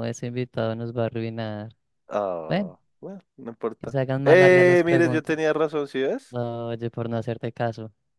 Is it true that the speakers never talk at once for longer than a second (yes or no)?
no